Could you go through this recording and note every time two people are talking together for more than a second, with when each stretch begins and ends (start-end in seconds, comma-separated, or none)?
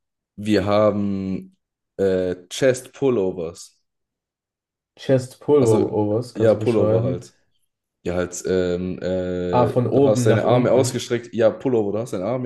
5.6-7.3, 9.5-11.0